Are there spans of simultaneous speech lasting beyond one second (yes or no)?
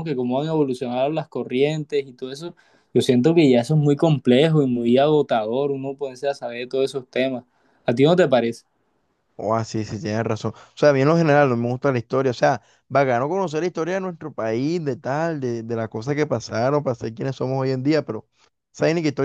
no